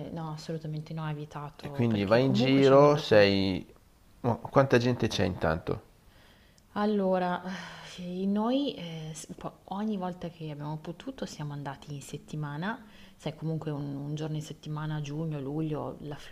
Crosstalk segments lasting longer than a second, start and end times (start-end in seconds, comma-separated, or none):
1.6-3.3